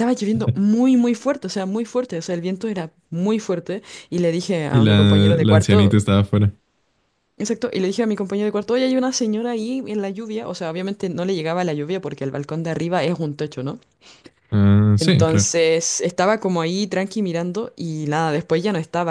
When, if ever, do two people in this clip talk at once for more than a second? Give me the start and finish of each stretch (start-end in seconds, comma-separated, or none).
4.7-5.9